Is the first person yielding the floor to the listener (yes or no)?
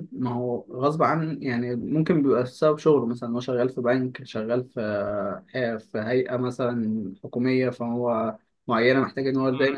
yes